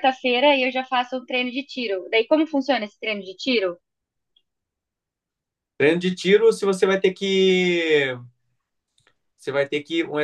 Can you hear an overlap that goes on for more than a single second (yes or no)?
no